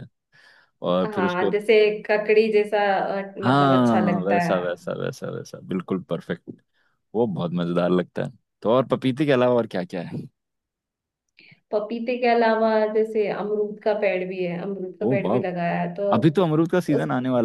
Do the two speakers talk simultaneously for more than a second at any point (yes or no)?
yes